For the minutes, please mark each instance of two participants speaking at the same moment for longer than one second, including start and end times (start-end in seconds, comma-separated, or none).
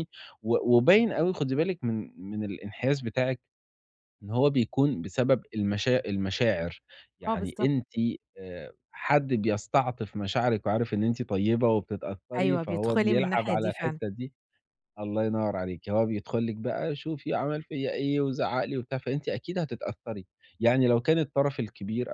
12.4-14.0